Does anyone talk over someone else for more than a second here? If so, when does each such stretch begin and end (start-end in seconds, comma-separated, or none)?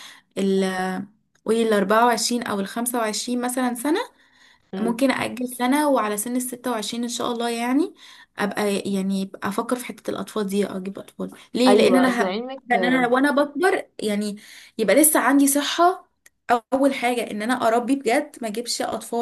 11.7-13.1